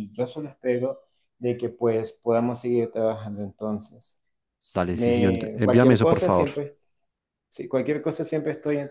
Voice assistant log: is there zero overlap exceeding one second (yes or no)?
no